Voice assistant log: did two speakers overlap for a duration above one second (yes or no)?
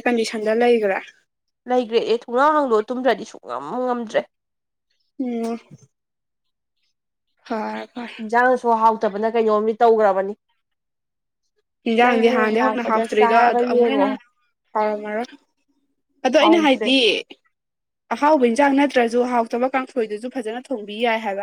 yes